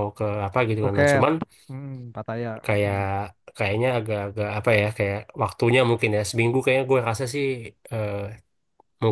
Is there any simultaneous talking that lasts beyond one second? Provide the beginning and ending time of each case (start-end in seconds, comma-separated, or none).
none